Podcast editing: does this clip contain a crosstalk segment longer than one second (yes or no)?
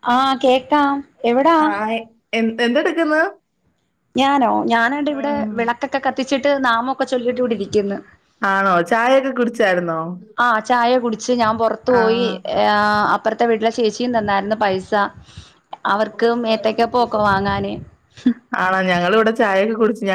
no